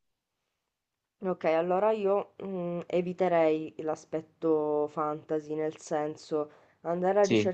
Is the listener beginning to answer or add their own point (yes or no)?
no